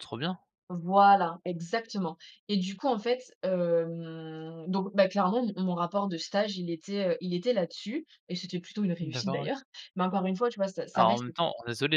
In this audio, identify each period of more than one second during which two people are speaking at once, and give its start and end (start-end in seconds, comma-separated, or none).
none